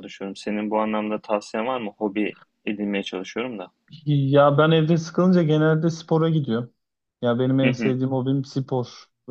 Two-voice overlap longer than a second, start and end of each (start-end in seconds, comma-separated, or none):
none